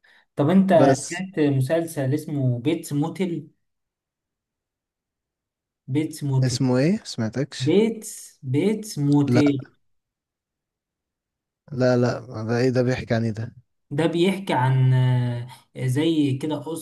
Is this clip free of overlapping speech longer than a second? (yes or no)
yes